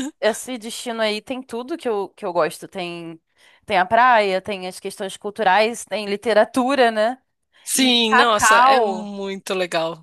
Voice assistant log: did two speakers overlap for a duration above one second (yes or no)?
yes